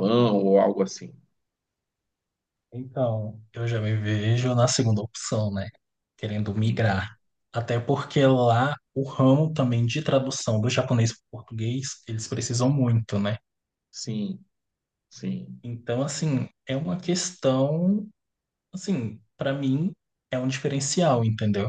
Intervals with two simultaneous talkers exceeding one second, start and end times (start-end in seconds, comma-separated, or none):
none